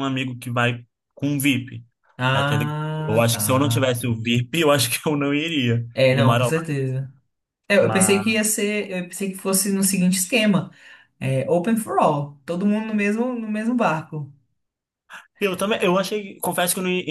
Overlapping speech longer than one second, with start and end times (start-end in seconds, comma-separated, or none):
2.3-3.9